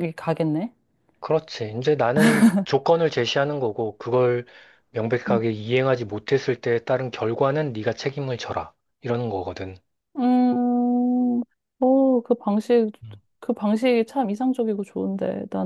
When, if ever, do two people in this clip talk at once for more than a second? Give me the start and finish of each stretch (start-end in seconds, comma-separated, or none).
none